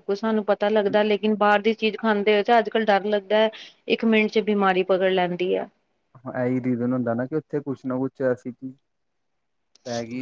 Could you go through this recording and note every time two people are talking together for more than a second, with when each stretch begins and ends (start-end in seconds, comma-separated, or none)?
none